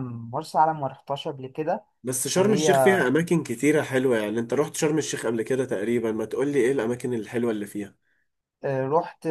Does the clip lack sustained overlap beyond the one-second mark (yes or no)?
yes